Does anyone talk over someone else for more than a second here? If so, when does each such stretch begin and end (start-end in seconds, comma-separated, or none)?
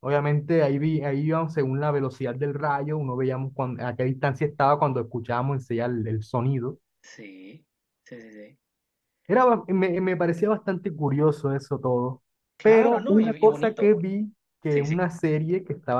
12.6-14.0